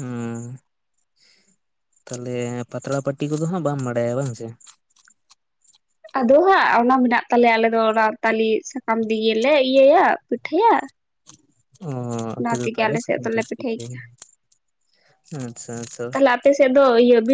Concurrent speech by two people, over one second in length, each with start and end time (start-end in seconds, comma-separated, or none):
12.4-14.0